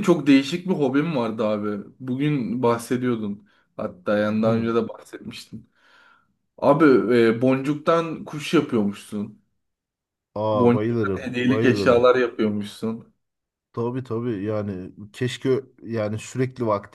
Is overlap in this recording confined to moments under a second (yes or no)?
no